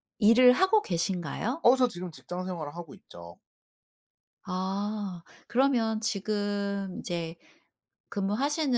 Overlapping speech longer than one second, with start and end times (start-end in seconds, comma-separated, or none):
none